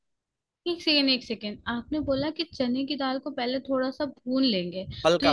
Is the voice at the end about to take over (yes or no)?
no